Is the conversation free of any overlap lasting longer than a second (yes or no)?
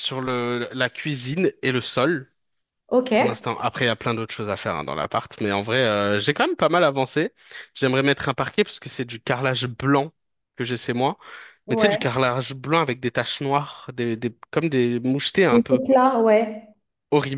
yes